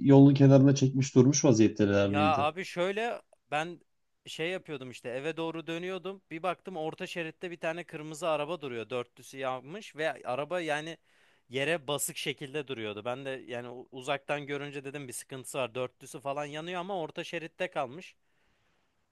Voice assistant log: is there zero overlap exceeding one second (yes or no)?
yes